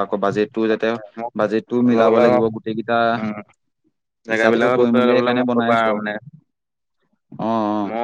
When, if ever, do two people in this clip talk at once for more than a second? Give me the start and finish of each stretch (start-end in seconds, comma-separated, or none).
4.3-5.8